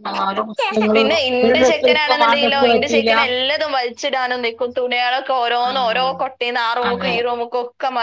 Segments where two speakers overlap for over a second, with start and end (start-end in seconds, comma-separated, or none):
0.9-3.1